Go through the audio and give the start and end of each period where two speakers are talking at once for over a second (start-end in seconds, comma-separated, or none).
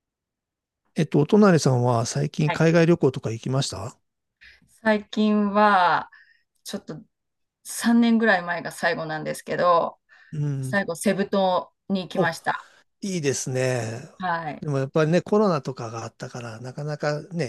none